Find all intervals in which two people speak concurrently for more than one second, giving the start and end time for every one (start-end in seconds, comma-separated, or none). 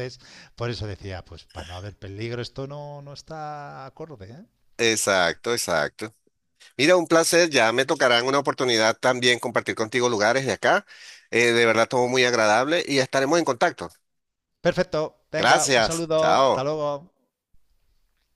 15.3-16.7